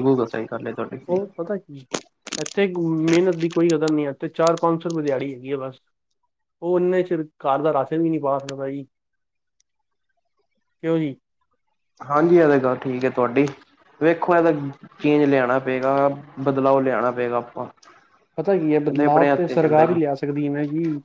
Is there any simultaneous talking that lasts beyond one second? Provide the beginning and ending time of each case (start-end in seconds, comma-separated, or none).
18.7-20.1